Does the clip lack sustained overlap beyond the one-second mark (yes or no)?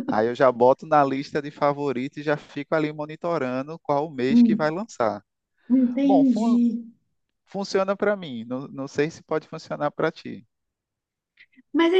yes